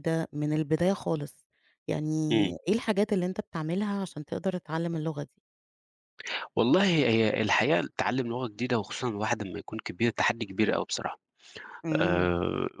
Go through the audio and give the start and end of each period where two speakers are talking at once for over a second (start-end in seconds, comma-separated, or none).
none